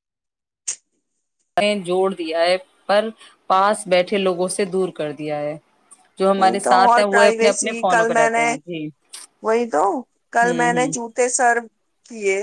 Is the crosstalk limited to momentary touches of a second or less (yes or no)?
no